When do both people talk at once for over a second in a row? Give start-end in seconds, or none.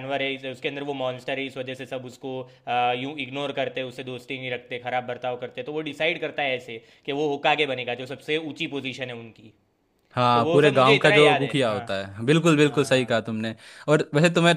10.3-11.8